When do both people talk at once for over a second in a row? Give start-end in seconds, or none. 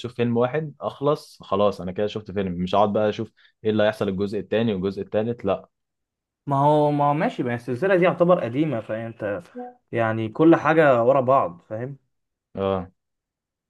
none